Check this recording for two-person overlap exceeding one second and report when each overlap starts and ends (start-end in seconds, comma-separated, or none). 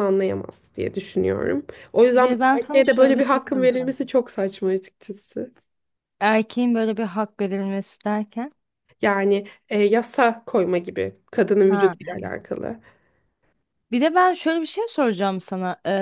2.1-4.0